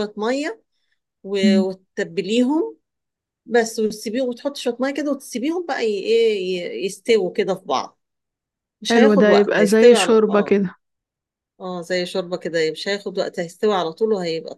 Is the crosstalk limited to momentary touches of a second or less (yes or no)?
no